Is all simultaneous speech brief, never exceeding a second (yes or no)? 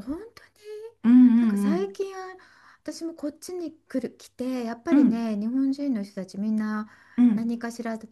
yes